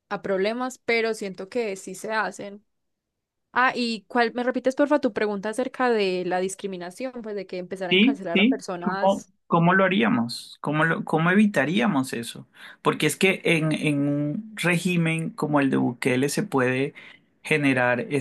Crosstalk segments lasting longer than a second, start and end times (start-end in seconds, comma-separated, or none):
7.9-9.3